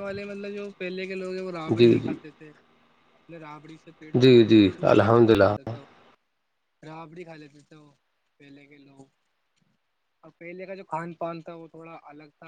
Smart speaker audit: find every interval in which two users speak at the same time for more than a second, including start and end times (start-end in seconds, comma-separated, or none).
4.2-5.7